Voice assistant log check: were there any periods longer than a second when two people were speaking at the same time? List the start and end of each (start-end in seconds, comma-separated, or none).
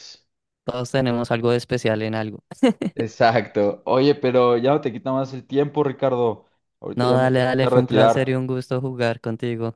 7.0-8.4